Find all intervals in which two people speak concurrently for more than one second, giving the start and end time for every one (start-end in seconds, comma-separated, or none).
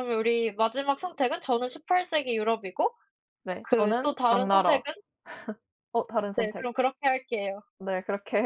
3.6-4.8